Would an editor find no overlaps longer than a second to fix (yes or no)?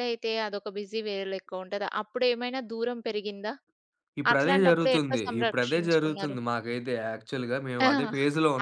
no